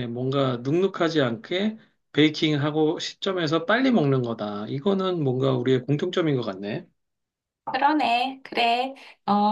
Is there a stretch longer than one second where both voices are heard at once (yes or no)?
no